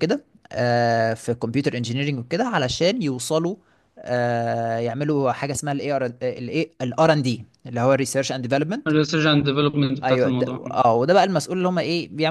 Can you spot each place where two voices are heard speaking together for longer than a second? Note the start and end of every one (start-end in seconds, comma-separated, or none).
none